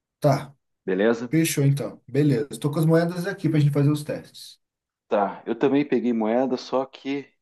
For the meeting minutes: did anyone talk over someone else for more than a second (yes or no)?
no